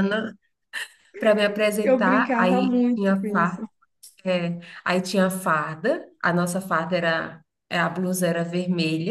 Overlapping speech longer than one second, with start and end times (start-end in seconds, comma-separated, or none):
1.8-3.6